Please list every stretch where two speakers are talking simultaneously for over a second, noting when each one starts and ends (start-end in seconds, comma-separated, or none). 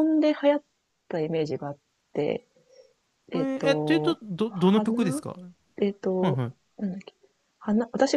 3.3-5.0